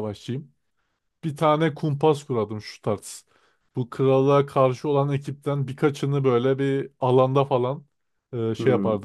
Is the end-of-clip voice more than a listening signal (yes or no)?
no